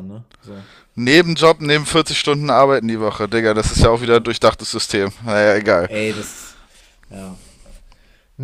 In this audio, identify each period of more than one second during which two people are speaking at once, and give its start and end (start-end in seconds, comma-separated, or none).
none